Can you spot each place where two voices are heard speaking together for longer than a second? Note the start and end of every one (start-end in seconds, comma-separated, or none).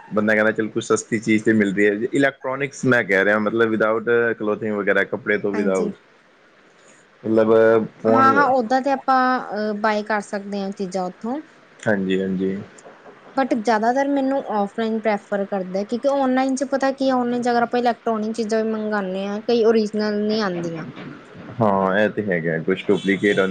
none